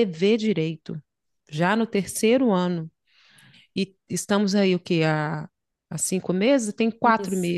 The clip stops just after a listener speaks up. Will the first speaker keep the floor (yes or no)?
yes